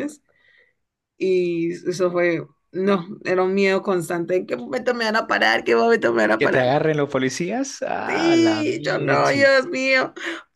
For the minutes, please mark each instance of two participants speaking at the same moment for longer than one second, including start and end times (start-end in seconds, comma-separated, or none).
8.1-9.5